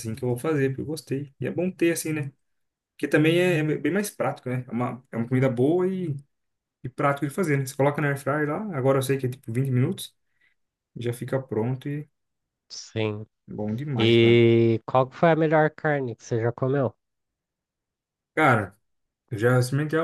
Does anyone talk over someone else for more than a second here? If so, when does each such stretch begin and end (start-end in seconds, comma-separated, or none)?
none